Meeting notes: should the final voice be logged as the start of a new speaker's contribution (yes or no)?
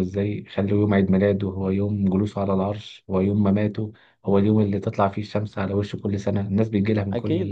yes